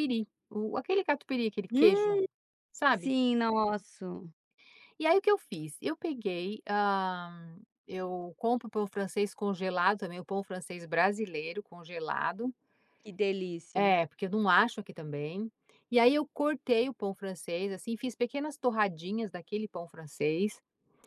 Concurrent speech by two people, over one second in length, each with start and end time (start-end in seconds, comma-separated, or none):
none